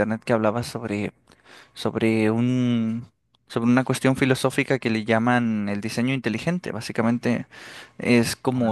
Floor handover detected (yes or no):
no